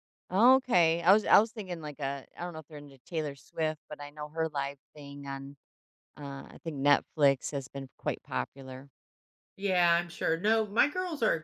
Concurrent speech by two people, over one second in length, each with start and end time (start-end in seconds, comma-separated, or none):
none